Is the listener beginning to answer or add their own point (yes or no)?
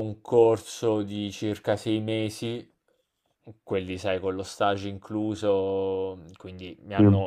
no